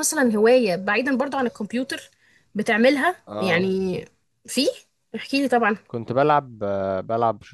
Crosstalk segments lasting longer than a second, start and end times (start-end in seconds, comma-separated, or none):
none